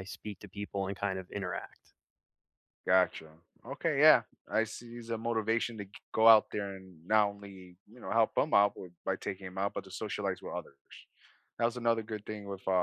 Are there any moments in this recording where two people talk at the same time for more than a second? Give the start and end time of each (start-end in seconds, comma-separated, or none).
none